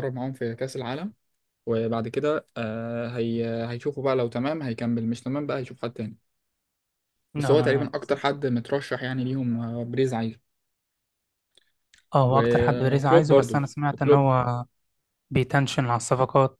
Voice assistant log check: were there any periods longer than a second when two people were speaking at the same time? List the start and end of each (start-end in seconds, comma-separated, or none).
12.3-14.3